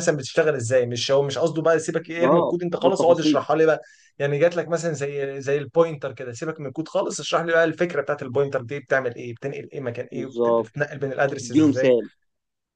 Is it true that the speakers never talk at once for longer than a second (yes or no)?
no